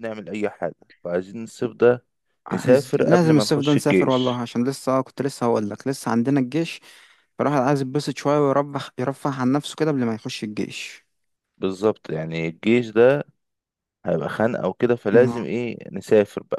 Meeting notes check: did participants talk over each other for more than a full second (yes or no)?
yes